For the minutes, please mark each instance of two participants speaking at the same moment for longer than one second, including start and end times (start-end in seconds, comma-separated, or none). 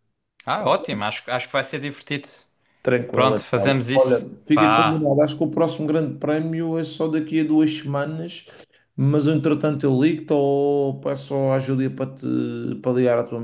3.1-5.1